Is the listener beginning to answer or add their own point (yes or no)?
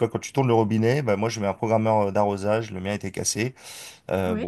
no